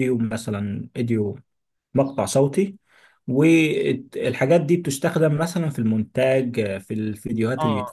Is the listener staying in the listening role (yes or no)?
no